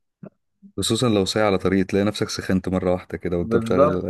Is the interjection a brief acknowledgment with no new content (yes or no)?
no